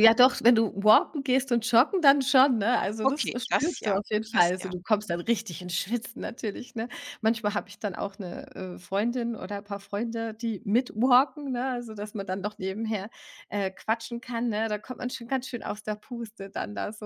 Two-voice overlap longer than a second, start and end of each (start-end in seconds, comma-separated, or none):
3.0-4.7